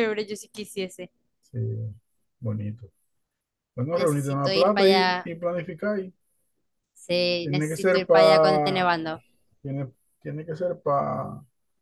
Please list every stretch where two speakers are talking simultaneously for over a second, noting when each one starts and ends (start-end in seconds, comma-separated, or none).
3.9-5.3, 7.4-8.9